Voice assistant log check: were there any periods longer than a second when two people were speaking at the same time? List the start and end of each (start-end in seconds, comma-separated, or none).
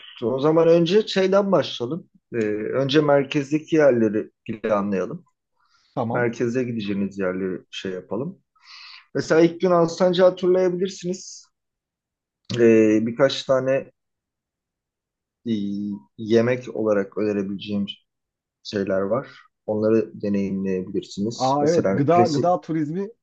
21.3-22.6